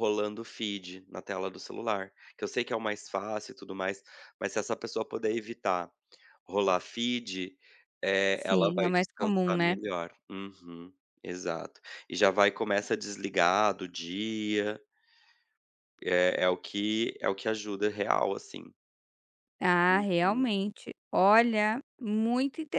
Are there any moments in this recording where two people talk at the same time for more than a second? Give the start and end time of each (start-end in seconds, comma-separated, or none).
8.3-9.8